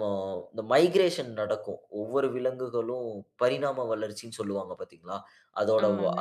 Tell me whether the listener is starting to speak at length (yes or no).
no